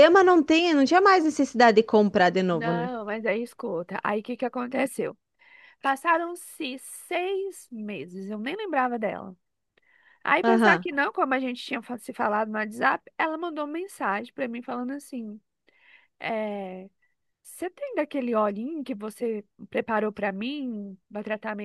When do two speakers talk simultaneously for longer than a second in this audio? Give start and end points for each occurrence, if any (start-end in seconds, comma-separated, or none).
none